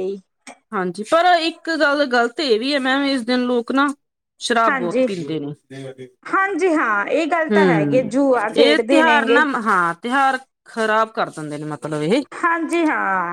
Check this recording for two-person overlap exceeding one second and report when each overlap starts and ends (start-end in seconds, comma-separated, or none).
7.5-9.4